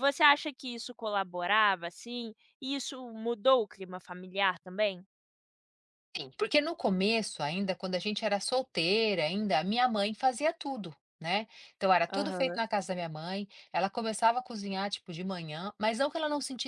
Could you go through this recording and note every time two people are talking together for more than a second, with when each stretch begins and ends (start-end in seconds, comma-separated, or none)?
none